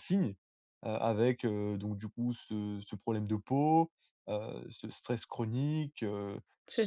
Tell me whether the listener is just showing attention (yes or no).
yes